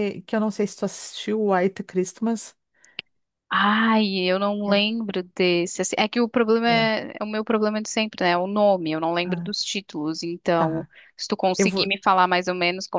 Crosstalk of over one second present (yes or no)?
no